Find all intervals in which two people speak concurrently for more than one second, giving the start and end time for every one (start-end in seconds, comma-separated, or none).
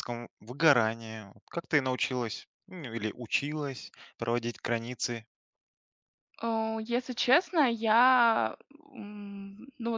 none